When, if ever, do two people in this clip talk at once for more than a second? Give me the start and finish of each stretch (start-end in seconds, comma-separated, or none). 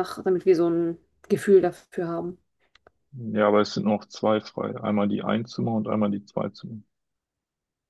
none